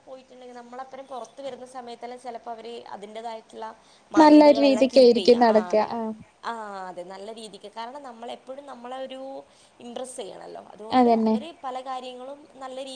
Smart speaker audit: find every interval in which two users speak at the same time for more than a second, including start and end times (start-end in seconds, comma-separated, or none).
4.2-5.6